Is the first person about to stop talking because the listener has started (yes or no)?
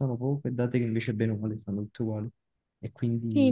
yes